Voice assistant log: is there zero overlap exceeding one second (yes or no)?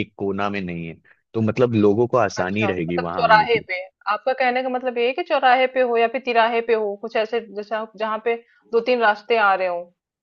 no